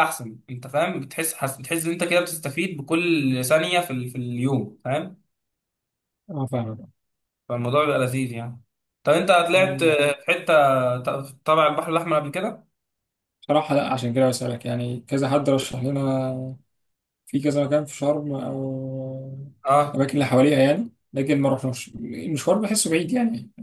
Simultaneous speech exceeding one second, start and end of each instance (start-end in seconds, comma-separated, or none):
none